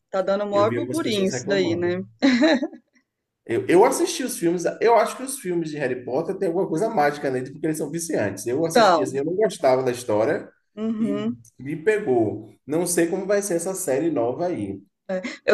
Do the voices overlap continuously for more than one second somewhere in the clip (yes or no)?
yes